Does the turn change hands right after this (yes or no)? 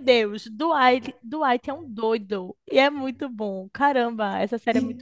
yes